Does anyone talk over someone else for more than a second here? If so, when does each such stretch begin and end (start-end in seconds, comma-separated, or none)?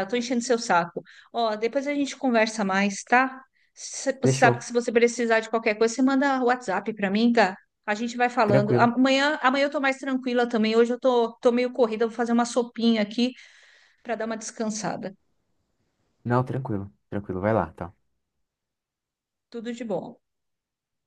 none